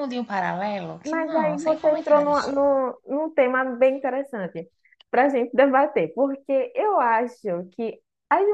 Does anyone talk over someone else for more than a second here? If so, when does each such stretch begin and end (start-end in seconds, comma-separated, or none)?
1.0-2.4